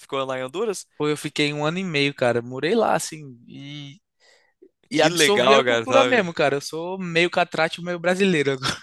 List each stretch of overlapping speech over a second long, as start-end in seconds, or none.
4.9-6.3